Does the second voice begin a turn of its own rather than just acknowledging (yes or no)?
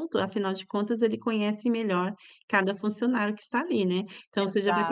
no